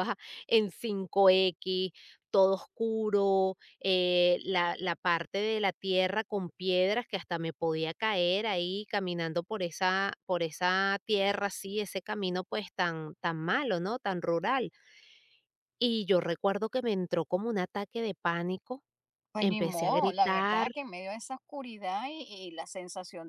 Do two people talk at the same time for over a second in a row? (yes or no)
yes